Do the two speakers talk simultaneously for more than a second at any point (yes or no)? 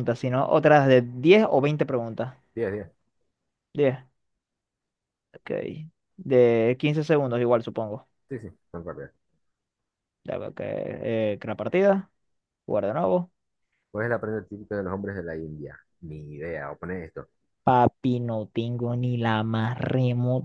no